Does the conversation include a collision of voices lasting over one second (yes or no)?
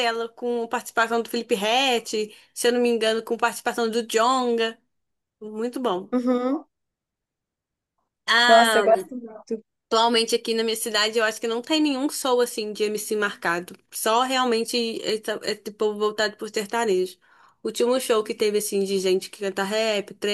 no